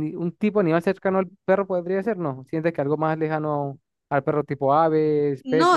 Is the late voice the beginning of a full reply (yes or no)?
yes